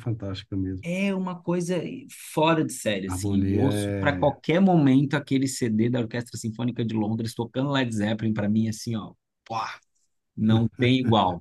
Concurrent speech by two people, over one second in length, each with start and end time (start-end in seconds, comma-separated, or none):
3.1-4.3